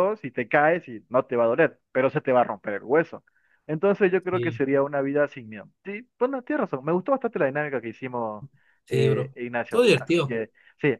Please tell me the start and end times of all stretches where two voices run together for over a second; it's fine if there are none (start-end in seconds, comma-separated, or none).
8.9-10.4